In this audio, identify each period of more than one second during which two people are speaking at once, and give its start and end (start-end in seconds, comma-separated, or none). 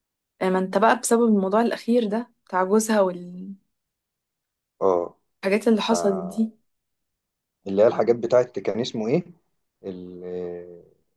none